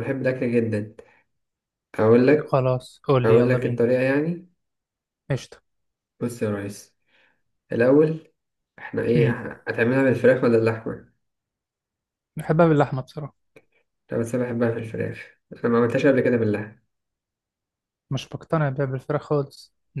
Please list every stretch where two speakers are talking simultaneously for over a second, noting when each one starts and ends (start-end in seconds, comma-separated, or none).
none